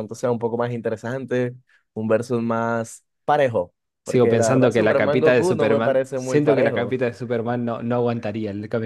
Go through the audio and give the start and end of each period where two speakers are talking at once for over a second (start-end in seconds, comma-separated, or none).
4.0-7.0